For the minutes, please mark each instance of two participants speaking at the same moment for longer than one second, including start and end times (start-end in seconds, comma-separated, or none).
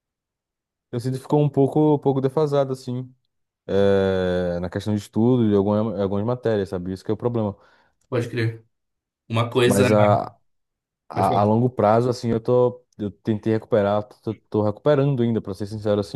none